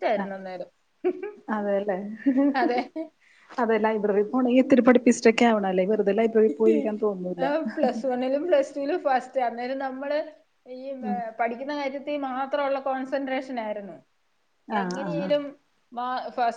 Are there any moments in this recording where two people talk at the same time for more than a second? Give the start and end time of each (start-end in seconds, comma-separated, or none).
none